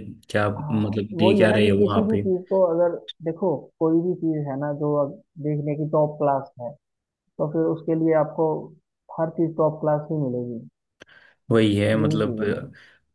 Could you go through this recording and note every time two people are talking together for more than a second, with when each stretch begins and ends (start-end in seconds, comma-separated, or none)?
0.6-2.2